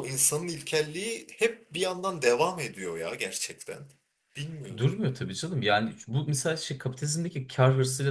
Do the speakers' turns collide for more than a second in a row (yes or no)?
no